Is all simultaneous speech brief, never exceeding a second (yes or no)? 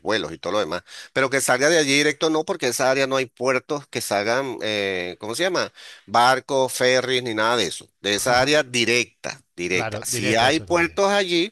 no